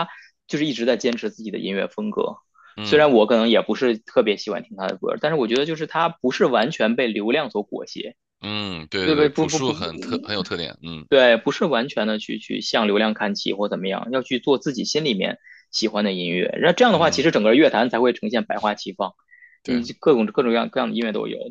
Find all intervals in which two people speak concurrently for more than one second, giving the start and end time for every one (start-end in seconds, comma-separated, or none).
9.0-10.2